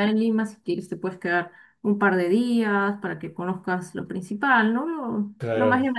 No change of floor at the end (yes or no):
yes